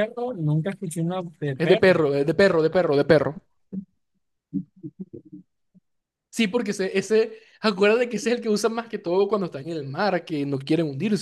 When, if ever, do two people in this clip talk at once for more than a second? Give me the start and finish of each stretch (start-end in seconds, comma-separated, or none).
none